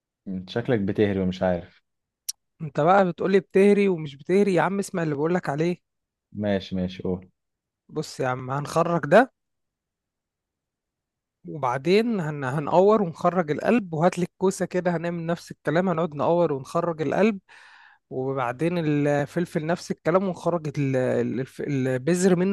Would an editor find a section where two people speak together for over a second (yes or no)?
no